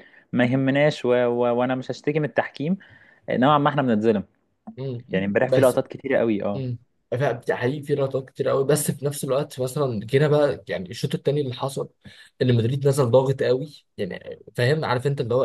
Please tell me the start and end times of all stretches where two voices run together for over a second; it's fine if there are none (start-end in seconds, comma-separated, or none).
none